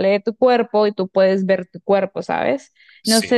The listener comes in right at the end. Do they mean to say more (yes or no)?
no